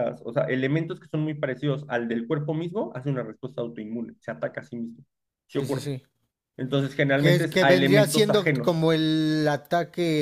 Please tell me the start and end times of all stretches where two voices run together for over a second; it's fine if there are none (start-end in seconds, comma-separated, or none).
7.2-8.9